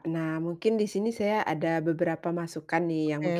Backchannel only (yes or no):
yes